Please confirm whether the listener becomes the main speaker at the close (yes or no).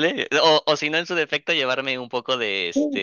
yes